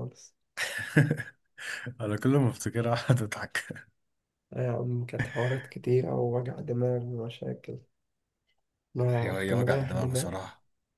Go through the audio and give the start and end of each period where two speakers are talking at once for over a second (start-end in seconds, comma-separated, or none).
9.2-10.4